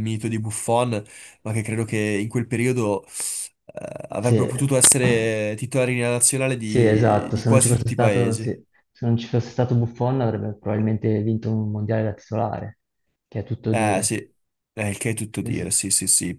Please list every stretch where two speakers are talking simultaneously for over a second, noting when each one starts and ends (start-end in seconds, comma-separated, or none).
6.6-8.5